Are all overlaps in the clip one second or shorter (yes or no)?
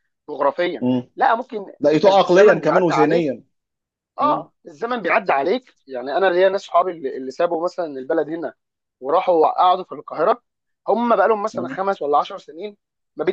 no